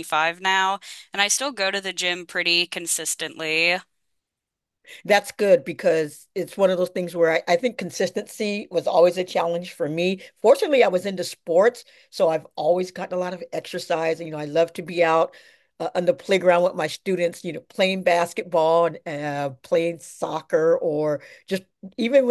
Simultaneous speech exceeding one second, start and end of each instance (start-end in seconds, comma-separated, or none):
none